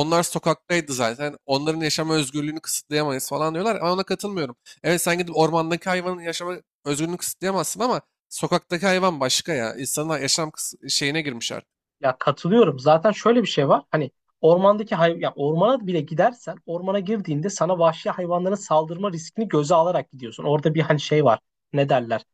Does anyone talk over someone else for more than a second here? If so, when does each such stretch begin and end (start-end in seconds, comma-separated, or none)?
none